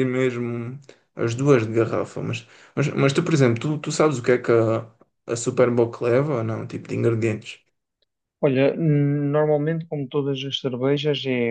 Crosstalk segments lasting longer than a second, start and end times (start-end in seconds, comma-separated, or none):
none